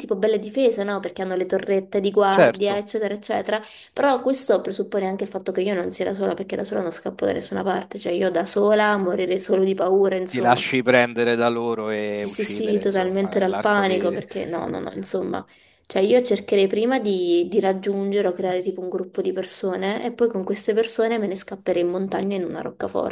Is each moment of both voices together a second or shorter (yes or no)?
no